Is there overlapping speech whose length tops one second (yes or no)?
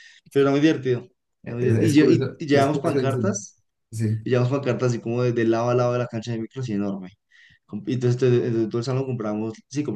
yes